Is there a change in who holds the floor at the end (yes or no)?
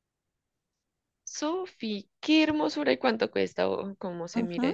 yes